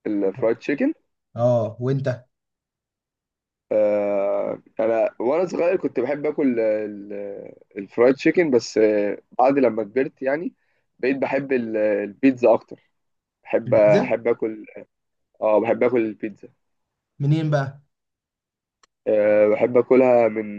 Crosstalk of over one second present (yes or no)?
no